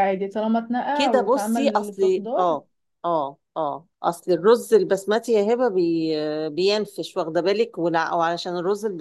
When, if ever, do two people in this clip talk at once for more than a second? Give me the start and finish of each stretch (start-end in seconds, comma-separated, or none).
0.9-2.6